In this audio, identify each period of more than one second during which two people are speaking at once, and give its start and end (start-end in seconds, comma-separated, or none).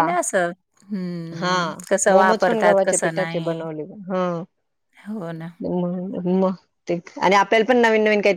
2.1-3.6